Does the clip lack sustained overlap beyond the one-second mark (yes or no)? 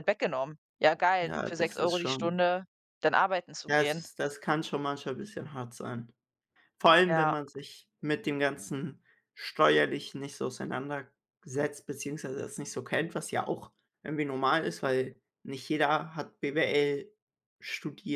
no